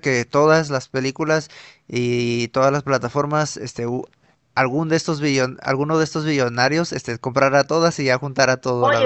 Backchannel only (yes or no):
no